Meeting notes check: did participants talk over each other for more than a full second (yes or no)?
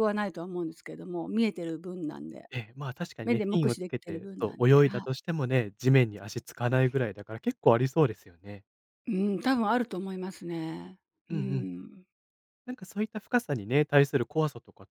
yes